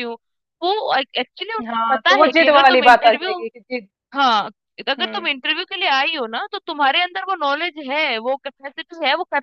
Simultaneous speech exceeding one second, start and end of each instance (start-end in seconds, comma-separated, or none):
1.7-3.3